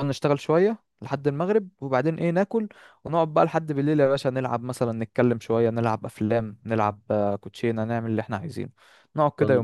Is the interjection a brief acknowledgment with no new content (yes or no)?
no